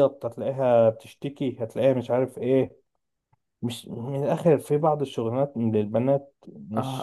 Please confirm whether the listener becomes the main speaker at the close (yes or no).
yes